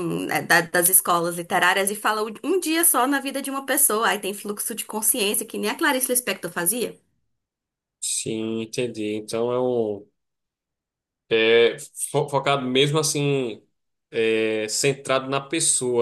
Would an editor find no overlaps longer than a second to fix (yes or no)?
yes